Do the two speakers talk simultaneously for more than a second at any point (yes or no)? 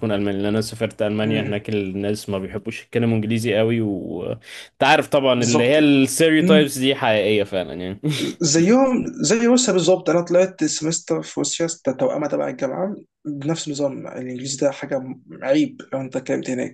no